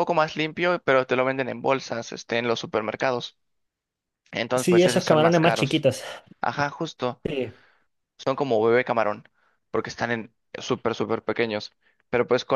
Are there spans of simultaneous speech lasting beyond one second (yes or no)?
yes